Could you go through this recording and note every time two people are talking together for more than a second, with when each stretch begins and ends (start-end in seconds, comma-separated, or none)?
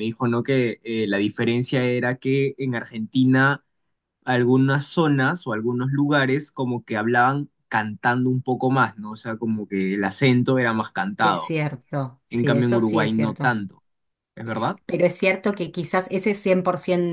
12.3-13.6